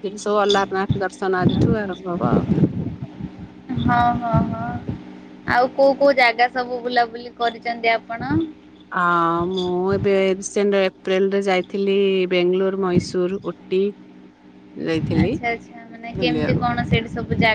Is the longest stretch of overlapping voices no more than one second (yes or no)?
yes